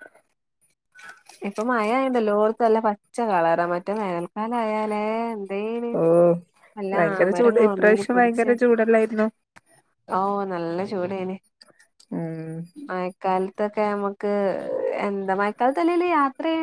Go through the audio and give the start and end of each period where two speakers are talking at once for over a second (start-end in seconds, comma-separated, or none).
6.9-8.5